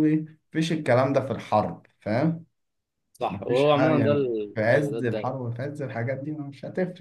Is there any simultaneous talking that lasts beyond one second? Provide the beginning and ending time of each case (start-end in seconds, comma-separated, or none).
3.3-5.3